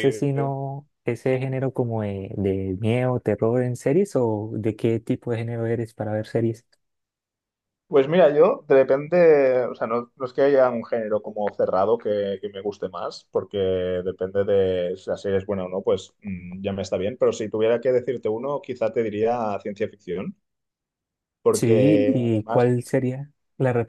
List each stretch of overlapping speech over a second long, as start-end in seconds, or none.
21.5-22.7